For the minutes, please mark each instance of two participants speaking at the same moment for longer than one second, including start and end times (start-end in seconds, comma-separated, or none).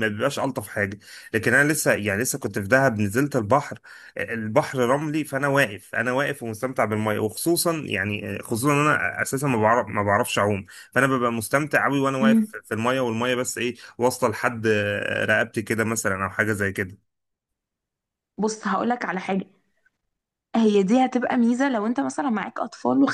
none